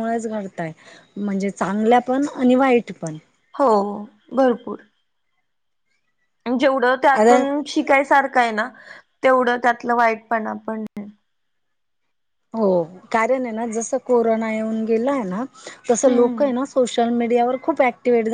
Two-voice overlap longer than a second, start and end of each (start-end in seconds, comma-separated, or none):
none